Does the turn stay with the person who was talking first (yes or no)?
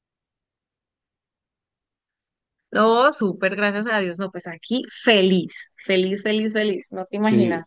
no